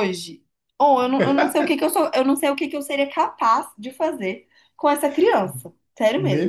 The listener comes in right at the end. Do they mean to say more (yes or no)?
yes